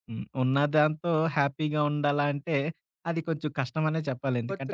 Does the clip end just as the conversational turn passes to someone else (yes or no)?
yes